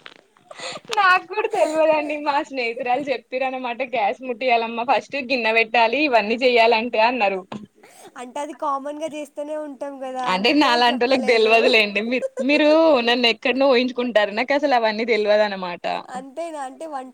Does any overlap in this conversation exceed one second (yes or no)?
no